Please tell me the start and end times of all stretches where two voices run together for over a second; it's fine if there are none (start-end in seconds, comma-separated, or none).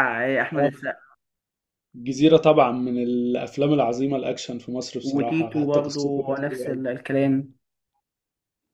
5.0-6.8